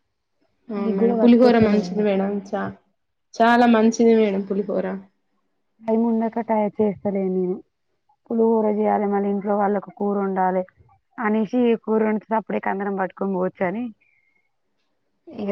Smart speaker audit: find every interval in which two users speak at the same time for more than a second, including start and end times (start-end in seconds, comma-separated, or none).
0.8-2.0